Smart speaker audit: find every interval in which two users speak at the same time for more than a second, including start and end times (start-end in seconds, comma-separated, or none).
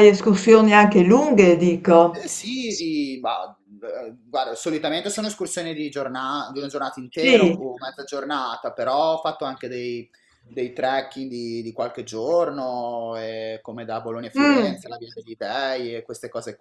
none